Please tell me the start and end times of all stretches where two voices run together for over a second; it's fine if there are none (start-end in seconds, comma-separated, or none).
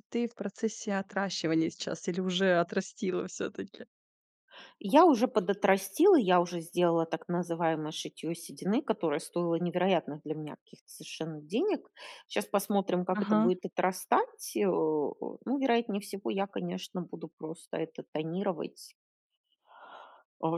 none